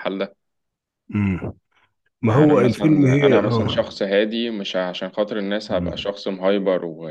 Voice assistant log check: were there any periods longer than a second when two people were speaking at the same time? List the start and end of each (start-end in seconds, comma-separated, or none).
2.3-3.9